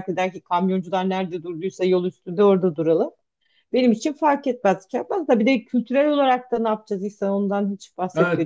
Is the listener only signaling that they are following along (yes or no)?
no